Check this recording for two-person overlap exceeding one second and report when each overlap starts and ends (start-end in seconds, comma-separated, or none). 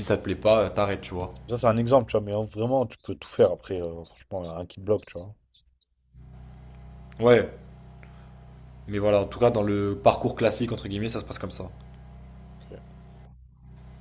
none